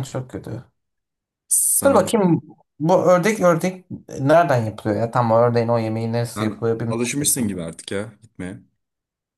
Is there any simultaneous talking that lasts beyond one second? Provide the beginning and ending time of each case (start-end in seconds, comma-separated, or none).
6.4-7.7